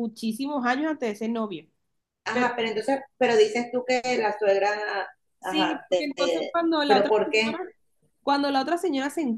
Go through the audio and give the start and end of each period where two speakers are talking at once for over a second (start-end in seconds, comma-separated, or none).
5.4-7.6